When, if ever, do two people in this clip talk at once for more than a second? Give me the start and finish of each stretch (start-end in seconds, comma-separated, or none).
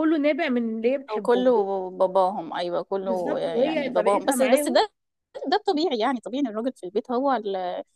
3.0-4.8